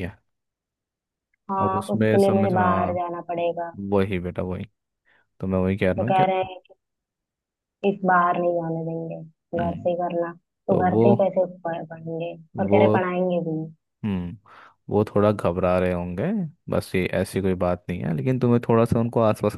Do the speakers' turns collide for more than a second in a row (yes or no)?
yes